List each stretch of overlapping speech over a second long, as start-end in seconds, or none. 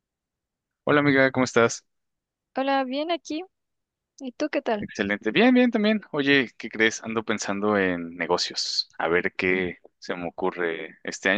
none